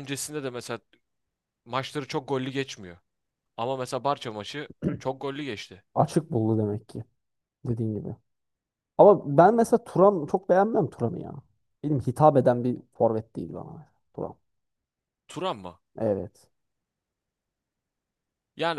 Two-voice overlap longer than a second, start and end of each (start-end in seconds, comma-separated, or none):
none